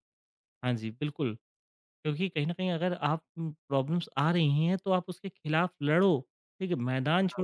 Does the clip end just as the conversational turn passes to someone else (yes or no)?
no